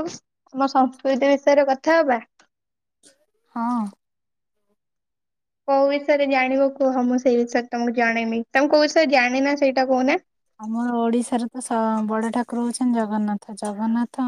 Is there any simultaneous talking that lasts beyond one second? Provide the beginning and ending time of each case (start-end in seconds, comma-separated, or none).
none